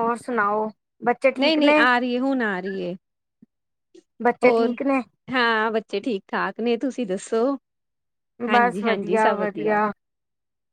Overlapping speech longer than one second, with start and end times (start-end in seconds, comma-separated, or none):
8.5-9.8